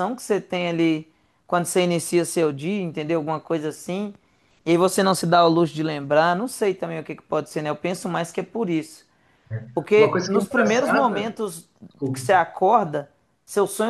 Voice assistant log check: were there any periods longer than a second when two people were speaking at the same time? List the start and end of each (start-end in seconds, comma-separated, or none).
10.0-11.3